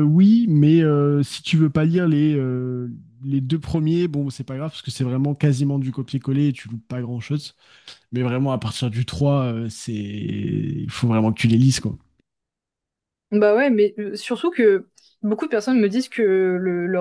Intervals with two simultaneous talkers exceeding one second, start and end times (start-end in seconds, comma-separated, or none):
none